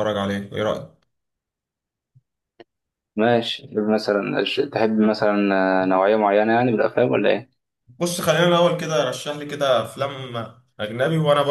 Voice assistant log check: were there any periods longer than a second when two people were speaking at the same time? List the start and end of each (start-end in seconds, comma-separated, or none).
none